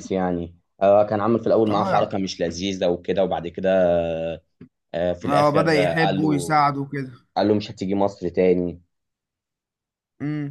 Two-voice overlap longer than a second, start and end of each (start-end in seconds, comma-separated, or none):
5.3-6.6